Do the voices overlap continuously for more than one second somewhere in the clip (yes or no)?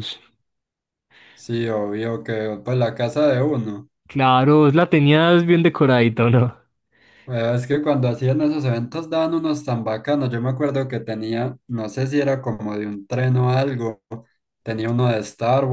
no